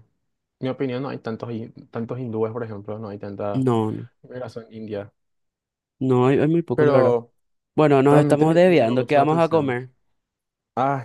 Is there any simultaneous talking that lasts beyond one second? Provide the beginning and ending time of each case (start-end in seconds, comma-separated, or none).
8.1-9.8